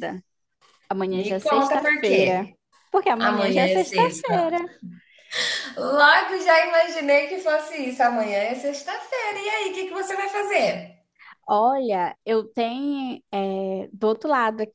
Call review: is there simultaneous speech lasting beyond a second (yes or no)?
yes